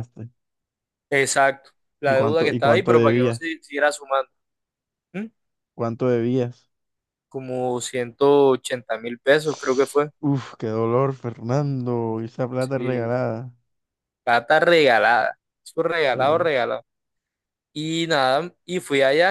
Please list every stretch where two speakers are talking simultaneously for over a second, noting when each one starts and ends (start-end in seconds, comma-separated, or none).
2.0-3.4